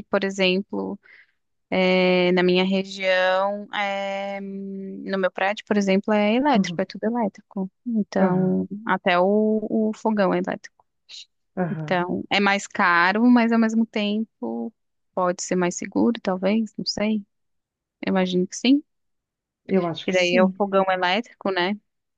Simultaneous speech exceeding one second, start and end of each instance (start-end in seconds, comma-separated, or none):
none